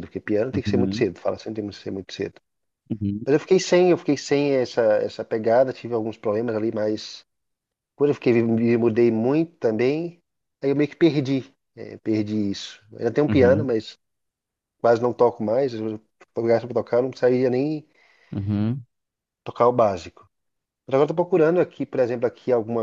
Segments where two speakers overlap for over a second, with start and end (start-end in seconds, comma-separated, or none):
none